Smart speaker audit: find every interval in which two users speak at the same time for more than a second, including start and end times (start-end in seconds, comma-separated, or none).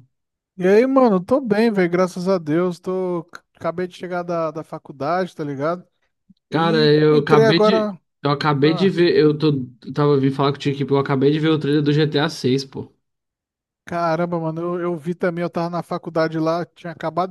6.5-8.0